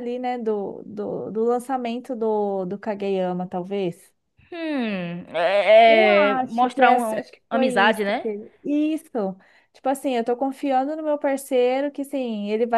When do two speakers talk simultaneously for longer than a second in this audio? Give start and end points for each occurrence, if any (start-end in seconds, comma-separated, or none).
5.8-8.3